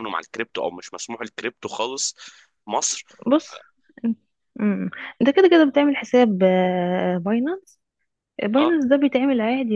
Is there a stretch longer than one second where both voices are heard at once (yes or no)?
no